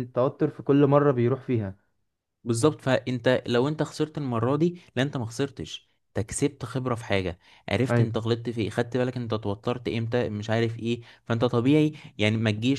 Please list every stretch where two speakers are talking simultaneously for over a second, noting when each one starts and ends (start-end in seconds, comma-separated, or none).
none